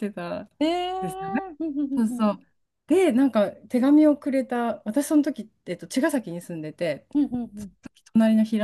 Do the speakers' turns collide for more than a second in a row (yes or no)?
no